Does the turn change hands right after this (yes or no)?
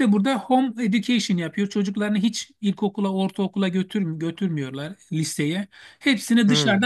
no